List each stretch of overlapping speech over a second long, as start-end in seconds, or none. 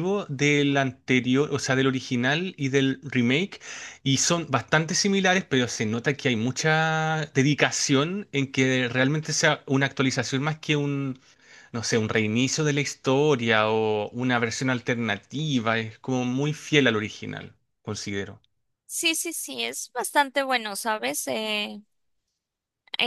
none